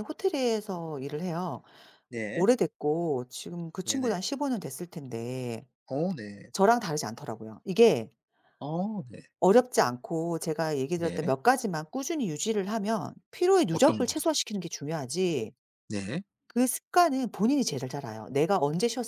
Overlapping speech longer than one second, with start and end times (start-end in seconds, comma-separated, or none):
none